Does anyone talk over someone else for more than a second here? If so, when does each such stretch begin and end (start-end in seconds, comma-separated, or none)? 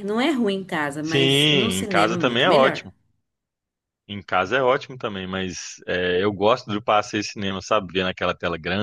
1.0-2.9